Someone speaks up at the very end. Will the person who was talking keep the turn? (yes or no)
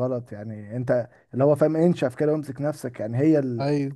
yes